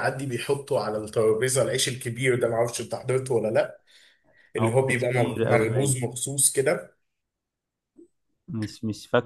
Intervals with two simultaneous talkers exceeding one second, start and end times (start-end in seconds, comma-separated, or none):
4.6-6.0